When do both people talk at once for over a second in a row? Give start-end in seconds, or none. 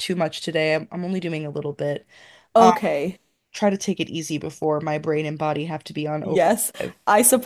none